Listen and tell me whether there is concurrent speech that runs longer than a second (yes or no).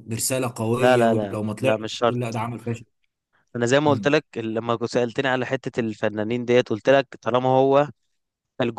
yes